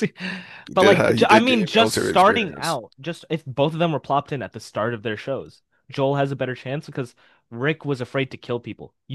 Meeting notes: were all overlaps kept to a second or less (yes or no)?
no